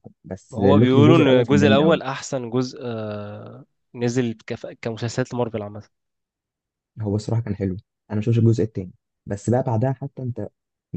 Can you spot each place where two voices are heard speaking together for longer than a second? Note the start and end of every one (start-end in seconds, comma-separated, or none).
0.5-2.0